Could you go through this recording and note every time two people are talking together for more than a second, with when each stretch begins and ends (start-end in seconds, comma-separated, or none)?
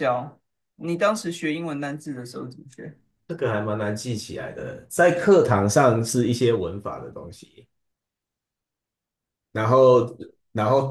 none